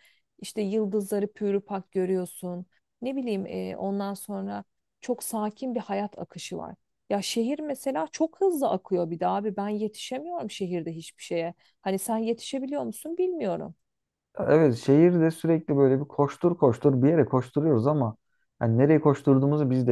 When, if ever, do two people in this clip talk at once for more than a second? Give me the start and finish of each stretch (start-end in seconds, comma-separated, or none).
none